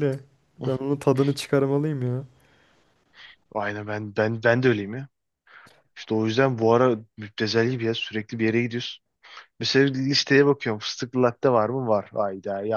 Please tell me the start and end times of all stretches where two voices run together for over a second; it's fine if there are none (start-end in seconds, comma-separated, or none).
none